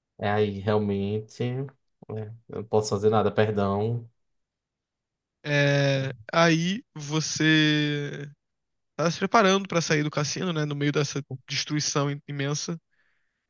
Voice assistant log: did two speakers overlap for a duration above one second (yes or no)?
no